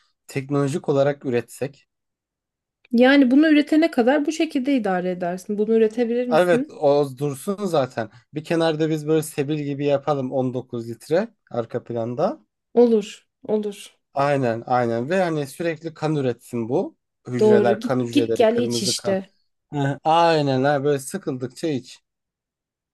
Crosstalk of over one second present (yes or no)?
yes